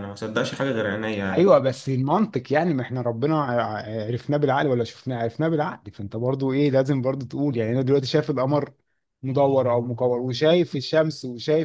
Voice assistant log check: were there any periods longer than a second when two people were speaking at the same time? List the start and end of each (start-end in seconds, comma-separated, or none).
none